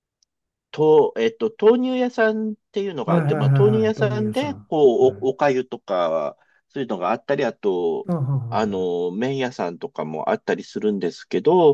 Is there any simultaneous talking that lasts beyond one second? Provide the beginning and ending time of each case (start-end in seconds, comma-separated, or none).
3.1-5.3